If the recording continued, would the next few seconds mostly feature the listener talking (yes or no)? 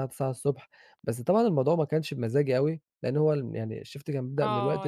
yes